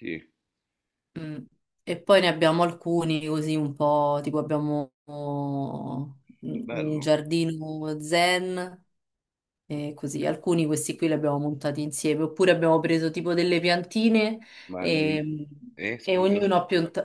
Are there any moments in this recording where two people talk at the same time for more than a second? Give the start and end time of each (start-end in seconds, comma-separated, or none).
none